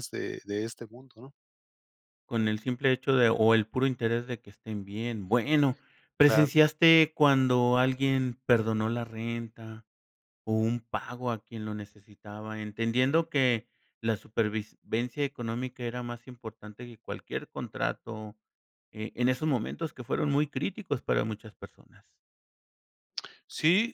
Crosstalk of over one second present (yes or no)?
no